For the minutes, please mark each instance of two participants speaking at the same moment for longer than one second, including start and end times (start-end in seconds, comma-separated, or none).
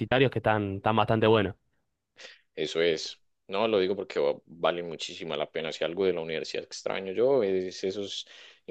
none